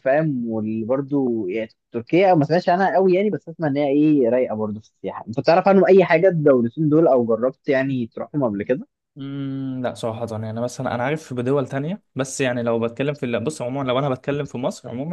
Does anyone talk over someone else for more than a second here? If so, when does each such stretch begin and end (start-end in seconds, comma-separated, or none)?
none